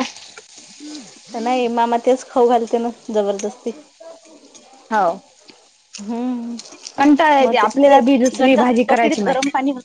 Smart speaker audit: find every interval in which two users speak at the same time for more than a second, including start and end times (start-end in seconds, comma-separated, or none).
7.4-9.3